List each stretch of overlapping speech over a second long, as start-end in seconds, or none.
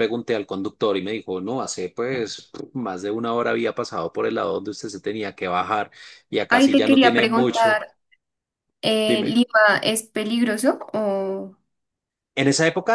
6.5-7.8